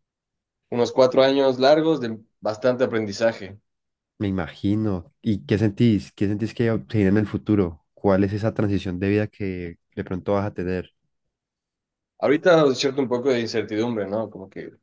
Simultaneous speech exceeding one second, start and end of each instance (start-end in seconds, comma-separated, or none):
none